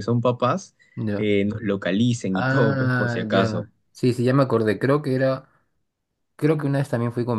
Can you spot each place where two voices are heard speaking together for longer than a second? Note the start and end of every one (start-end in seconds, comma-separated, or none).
2.3-3.6